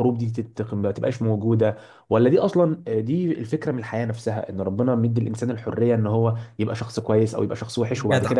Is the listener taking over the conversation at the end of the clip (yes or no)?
yes